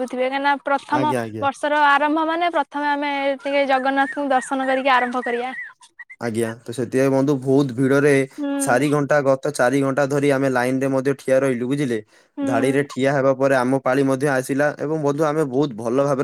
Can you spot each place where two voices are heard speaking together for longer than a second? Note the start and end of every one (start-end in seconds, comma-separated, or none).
none